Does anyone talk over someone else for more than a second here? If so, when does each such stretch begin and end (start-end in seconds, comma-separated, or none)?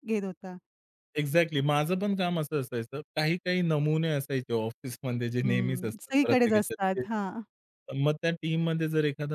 5.4-7.1